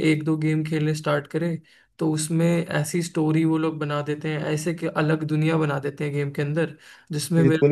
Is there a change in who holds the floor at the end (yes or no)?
no